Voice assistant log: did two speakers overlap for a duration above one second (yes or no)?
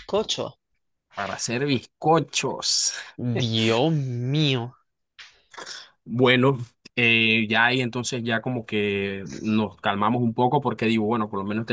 no